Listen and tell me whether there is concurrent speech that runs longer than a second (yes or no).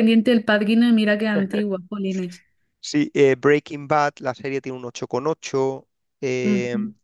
no